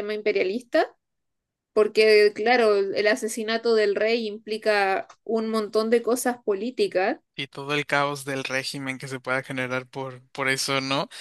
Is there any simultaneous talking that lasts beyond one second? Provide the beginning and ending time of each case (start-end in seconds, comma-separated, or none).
none